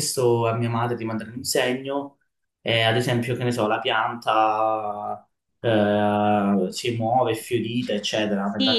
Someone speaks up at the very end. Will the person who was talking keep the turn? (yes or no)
no